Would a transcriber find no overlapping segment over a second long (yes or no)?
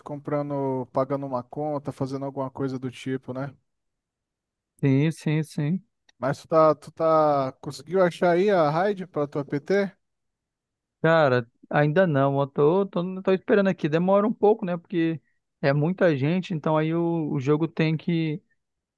yes